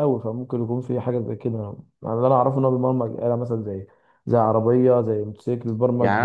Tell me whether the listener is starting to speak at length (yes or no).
yes